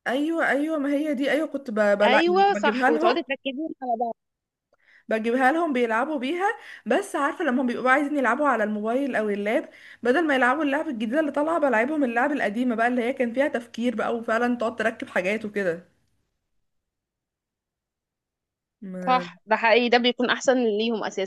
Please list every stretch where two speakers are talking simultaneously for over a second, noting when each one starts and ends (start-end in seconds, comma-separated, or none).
2.0-3.2